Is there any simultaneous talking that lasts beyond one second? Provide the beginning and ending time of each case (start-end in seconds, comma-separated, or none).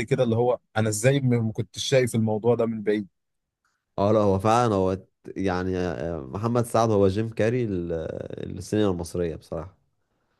none